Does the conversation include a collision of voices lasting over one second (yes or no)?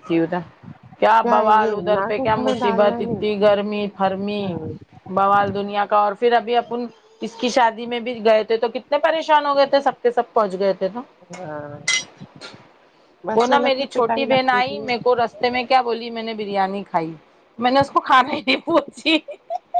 yes